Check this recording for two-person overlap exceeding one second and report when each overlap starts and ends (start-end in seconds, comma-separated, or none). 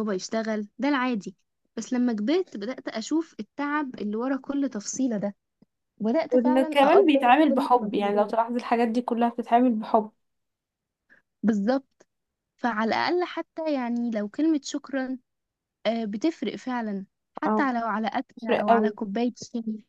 6.3-8.3